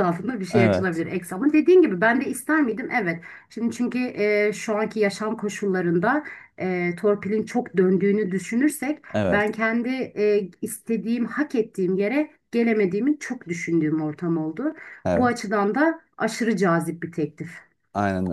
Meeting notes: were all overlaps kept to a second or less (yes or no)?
yes